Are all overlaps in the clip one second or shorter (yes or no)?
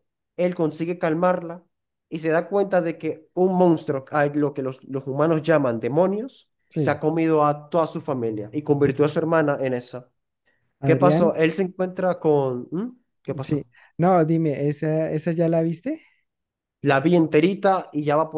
yes